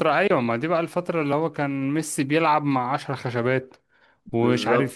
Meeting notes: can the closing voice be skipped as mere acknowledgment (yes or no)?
yes